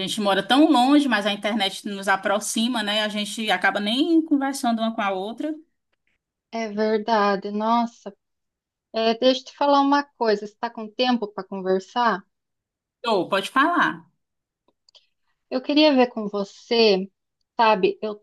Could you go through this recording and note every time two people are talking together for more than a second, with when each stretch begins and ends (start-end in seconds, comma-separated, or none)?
none